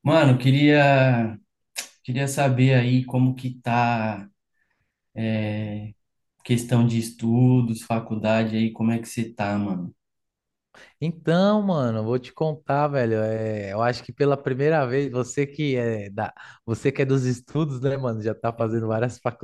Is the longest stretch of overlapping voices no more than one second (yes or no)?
yes